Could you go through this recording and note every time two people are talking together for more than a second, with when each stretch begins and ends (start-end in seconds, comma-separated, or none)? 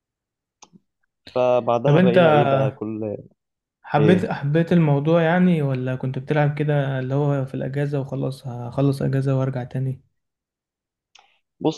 none